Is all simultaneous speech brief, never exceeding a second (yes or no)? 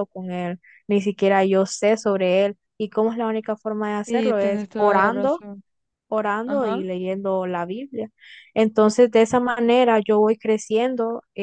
no